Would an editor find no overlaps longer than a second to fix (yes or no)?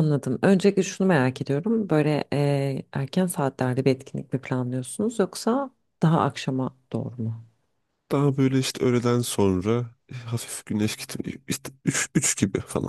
yes